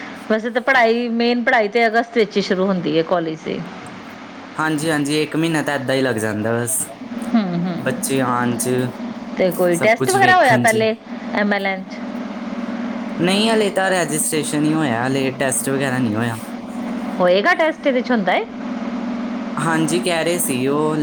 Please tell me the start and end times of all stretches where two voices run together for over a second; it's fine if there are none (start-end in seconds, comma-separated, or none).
9.6-10.8